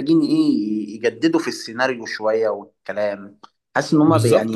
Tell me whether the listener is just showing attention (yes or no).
no